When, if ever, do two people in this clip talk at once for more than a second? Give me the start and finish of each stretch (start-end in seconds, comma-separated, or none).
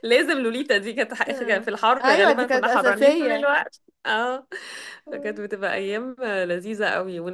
1.3-3.5